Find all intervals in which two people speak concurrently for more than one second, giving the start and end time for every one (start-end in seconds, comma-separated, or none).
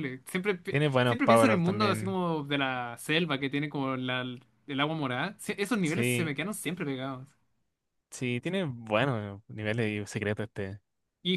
0.7-2.2